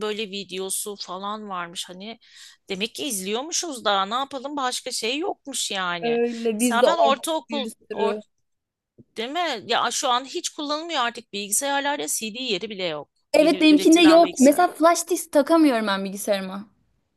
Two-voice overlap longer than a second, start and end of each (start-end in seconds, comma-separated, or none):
6.0-8.1, 13.3-14.6